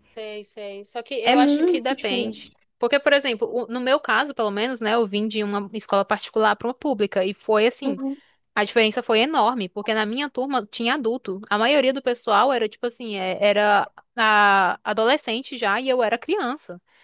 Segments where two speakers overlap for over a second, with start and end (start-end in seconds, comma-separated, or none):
1.2-2.5